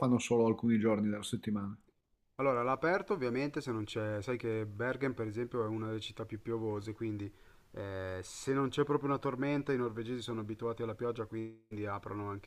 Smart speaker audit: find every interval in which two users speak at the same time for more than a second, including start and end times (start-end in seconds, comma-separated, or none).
none